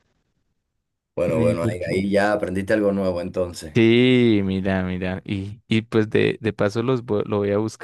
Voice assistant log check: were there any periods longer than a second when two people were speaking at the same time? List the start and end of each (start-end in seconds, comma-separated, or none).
none